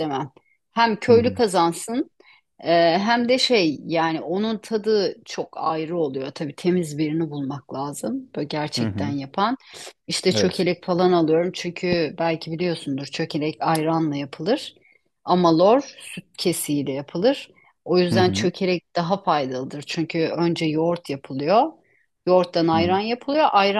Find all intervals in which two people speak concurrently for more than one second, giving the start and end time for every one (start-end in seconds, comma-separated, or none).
none